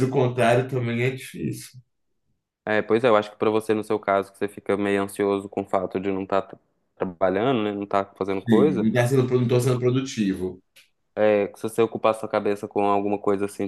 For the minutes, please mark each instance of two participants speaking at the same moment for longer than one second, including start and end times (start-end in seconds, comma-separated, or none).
none